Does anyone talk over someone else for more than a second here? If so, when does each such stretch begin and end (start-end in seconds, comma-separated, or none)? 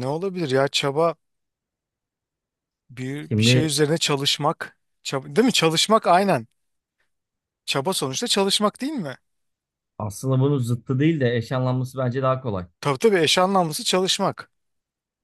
none